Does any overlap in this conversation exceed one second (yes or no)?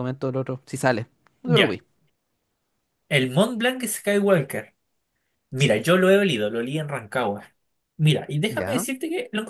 no